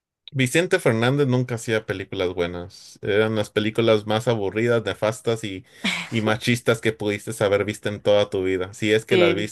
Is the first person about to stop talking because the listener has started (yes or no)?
yes